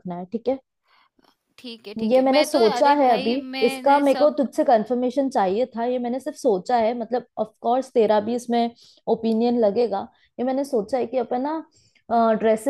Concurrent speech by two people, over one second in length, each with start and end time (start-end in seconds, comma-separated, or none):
2.1-4.4